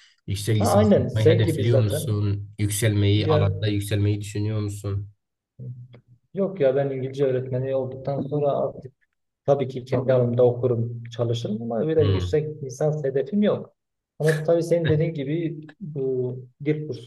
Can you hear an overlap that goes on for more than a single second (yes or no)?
yes